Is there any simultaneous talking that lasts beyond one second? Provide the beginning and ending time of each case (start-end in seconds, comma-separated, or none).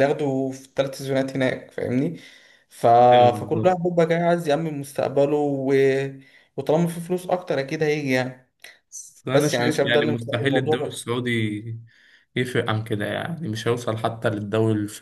9.3-11.0